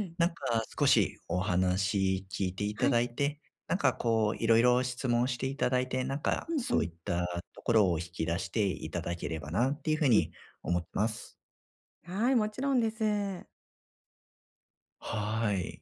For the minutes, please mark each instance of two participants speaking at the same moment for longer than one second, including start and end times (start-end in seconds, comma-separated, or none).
none